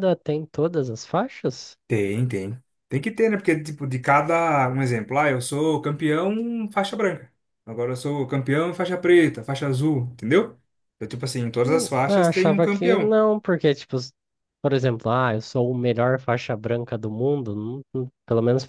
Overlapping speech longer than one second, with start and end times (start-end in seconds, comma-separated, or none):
11.6-13.1